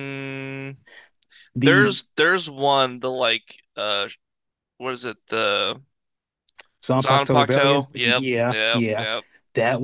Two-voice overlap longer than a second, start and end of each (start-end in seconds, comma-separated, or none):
7.0-9.1